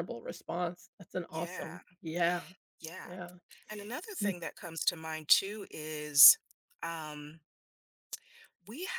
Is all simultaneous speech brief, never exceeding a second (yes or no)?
yes